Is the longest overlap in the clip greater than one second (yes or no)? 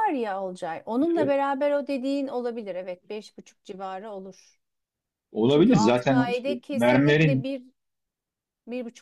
yes